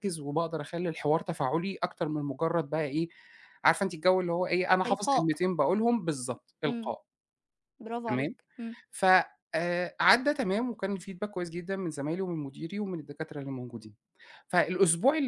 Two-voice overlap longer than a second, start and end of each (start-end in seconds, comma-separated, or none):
none